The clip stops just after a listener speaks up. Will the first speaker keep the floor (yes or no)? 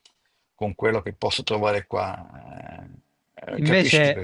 no